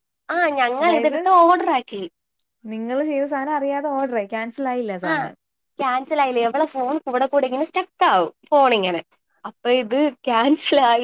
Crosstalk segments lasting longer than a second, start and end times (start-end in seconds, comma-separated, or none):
none